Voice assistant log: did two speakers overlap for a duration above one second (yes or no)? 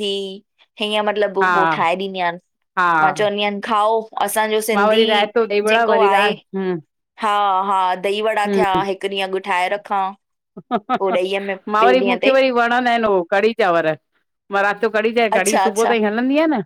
no